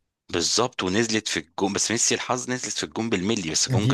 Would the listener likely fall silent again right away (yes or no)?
no